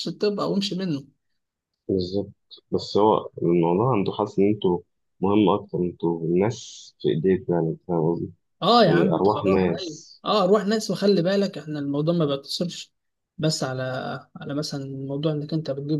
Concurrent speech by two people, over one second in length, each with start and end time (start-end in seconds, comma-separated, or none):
8.9-10.1